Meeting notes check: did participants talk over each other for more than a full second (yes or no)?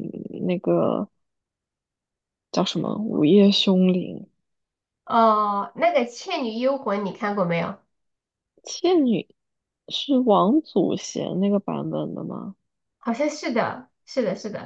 no